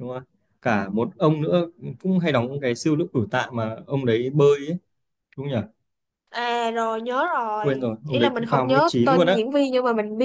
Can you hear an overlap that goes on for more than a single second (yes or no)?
yes